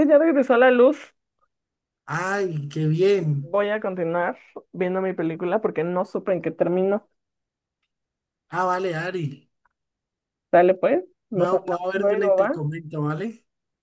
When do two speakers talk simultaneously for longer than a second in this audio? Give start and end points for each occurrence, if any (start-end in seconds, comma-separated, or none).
11.3-12.6